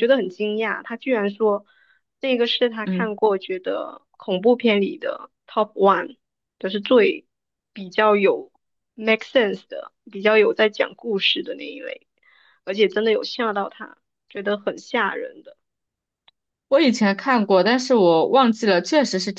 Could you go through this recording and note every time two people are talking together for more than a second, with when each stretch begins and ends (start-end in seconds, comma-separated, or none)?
none